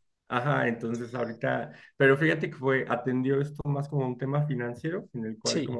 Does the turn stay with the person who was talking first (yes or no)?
yes